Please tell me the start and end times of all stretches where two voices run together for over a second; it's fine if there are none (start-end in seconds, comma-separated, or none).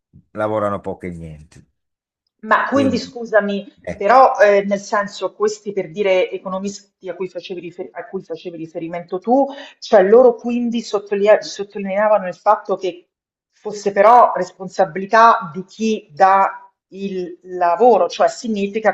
none